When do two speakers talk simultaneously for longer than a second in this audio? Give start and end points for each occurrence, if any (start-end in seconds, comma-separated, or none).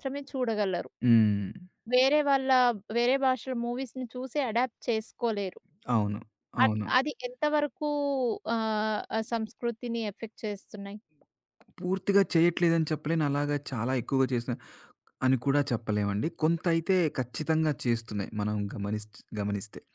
none